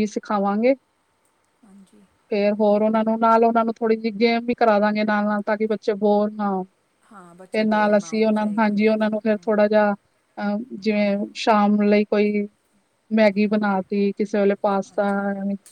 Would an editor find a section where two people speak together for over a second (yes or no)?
yes